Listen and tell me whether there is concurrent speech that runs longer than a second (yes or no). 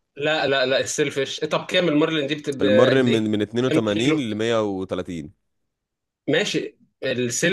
yes